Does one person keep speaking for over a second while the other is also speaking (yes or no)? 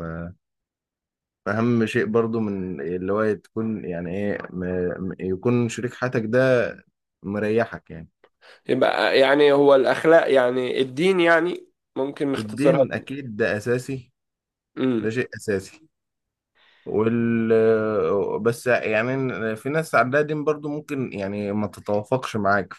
no